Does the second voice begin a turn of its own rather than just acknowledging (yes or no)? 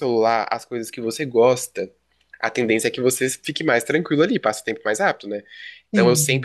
no